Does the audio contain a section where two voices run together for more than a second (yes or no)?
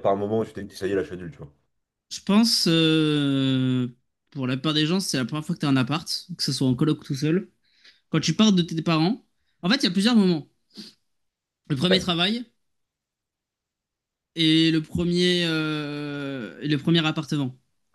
no